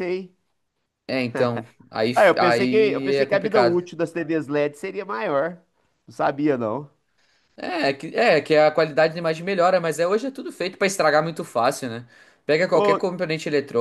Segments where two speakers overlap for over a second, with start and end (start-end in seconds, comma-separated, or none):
2.1-3.8